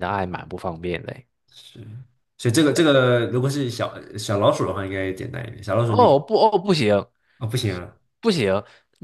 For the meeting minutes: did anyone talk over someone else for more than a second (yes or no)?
no